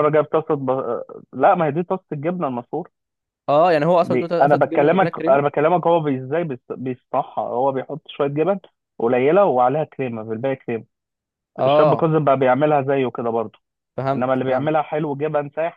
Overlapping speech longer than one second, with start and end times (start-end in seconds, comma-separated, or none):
4.0-5.5